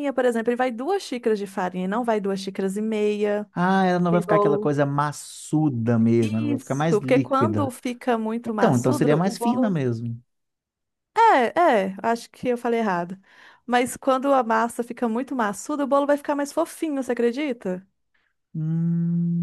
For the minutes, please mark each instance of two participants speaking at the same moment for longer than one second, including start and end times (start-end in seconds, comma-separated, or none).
6.2-7.7, 8.4-9.8